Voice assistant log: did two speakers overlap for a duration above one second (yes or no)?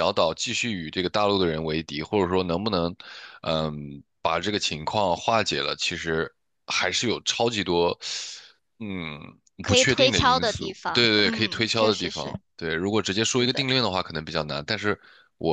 yes